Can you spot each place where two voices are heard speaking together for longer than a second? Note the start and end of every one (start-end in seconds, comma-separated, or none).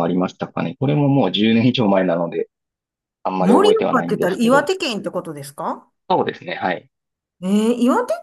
3.4-4.7